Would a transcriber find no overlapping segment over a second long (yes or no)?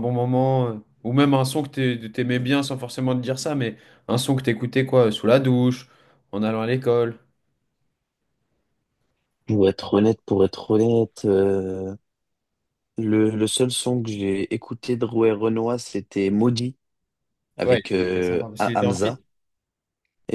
no